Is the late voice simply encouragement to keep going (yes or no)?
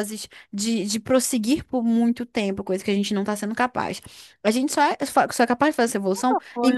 yes